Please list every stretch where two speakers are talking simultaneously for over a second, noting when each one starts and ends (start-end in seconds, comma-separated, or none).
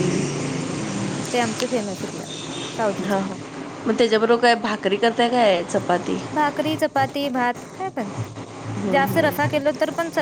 none